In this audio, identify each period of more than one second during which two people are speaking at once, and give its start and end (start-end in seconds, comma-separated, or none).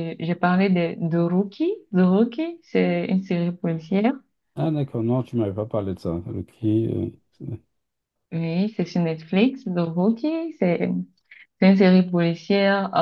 none